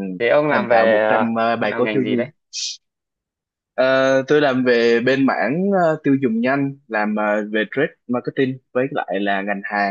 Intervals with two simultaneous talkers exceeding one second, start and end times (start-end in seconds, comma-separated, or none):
0.5-2.3